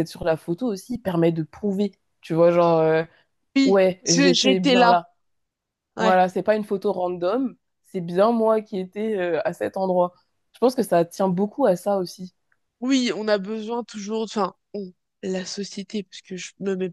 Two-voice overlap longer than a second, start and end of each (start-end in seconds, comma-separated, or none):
3.6-5.0